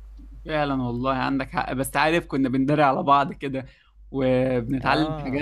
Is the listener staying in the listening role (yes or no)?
yes